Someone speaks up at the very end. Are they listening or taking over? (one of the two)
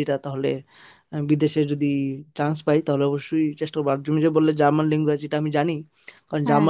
listening